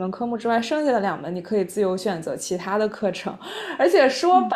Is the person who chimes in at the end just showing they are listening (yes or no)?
yes